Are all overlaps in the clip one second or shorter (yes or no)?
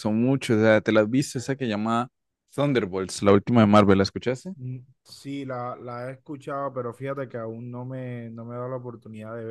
yes